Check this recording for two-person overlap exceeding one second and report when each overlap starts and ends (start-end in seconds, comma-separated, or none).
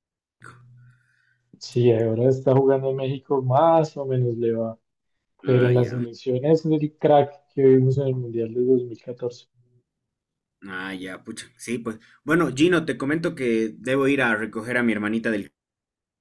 none